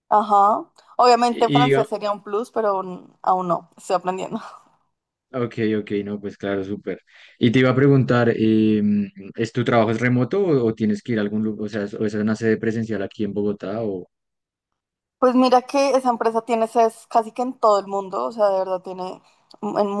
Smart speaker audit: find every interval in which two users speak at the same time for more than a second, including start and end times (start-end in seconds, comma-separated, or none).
none